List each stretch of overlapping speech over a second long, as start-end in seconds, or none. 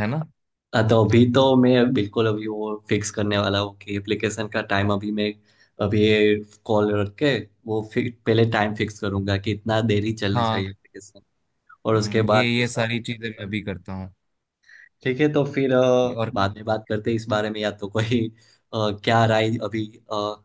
11.9-13.5